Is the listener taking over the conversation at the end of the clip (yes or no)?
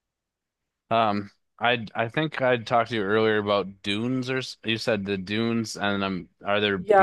yes